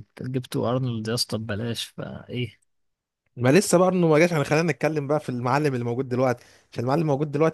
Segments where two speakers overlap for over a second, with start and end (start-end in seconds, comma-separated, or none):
none